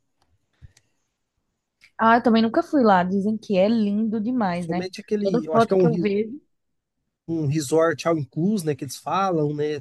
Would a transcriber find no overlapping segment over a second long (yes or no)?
no